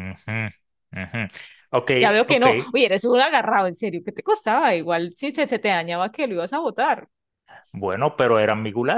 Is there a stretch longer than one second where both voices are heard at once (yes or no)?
no